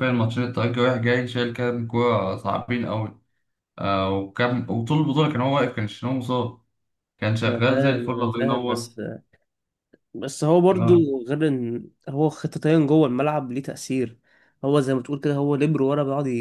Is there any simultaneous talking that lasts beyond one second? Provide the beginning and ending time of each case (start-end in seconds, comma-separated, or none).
7.5-8.9